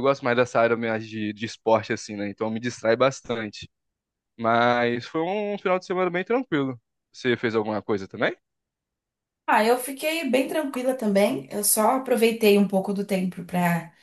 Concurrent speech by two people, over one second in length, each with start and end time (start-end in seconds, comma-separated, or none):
none